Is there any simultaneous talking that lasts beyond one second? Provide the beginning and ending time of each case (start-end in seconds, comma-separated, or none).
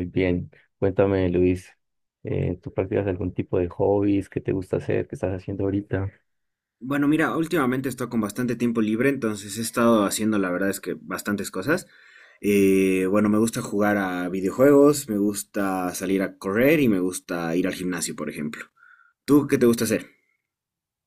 none